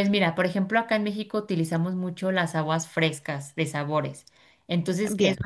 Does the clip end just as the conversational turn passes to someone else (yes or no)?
no